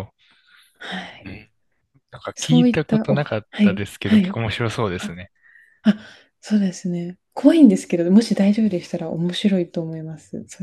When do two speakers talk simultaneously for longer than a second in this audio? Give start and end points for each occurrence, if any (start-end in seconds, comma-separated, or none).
2.4-4.4